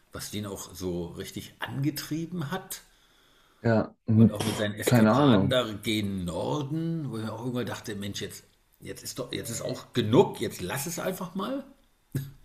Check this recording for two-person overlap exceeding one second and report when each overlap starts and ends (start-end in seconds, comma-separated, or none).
4.2-5.5